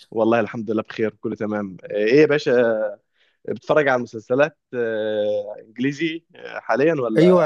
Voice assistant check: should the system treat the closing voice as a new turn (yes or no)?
yes